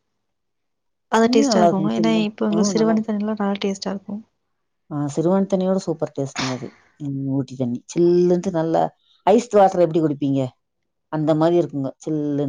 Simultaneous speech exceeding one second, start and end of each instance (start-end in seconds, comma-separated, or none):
1.2-3.0